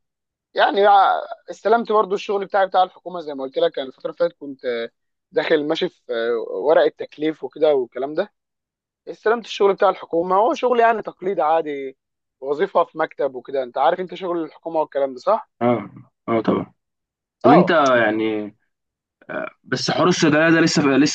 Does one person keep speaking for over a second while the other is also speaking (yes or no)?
no